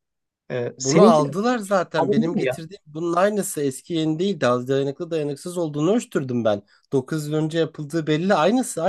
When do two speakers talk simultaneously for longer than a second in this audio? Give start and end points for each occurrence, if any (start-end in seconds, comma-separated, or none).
0.8-2.6